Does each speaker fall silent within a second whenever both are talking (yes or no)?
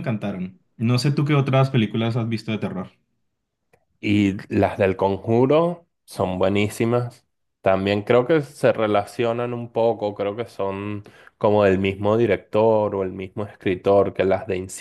yes